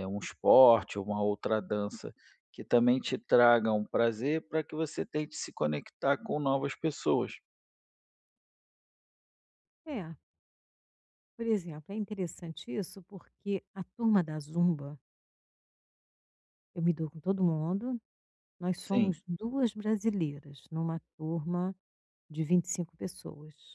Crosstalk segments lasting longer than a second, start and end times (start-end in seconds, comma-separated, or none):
none